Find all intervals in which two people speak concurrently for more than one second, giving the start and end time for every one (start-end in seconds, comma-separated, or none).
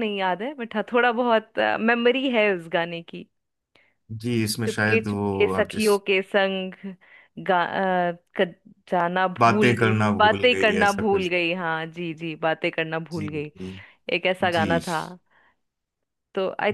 4.7-5.9, 9.4-11.3